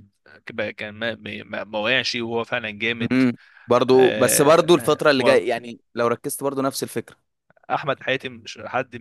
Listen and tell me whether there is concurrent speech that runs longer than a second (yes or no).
yes